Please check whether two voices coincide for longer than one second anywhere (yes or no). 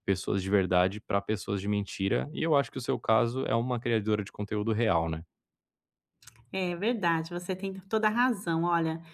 no